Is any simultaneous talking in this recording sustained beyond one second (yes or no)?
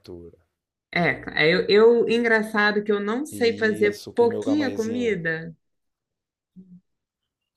yes